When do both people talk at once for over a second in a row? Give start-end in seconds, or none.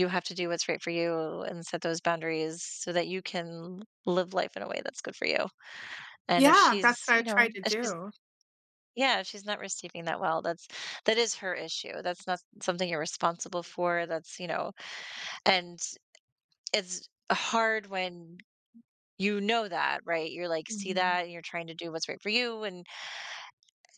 6.4-7.9